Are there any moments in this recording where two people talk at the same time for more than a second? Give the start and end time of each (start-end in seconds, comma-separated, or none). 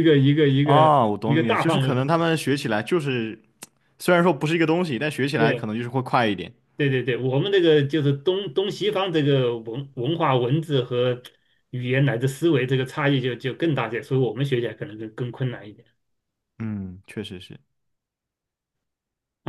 0.6-2.0